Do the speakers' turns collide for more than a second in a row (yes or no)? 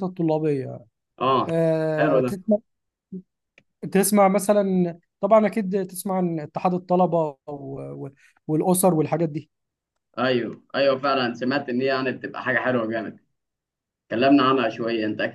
no